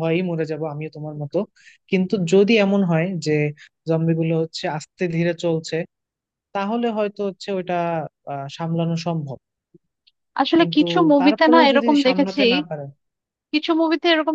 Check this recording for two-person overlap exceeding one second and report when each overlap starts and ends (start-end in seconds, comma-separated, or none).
10.6-12.4